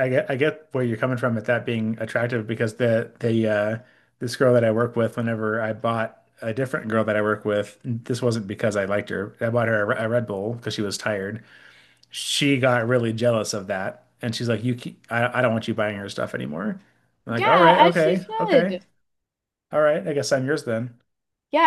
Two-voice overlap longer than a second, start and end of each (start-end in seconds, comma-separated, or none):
17.4-18.8